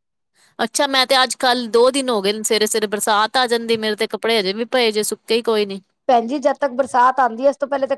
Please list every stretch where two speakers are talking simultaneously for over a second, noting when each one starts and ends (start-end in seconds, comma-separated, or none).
none